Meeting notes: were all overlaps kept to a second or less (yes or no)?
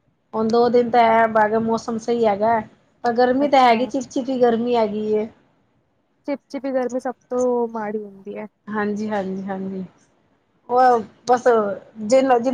yes